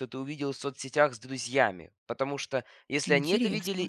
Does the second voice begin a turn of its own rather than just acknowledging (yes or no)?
no